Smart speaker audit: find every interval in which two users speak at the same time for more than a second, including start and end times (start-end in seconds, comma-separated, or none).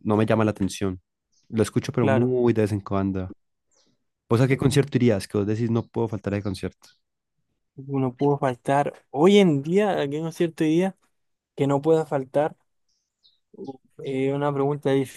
none